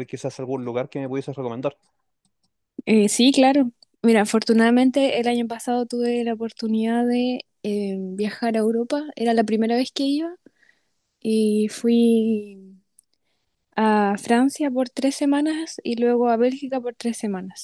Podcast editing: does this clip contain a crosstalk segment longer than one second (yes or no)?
no